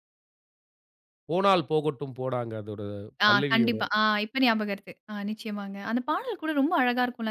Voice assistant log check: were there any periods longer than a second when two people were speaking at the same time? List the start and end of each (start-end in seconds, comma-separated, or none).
none